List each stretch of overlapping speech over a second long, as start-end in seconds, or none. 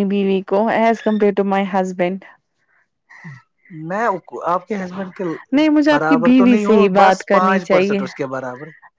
5.9-8.0